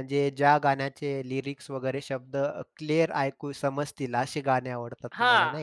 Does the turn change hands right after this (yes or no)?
yes